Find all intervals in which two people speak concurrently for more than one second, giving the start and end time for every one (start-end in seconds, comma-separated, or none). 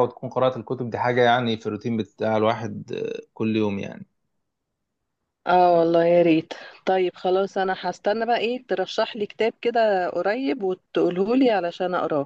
none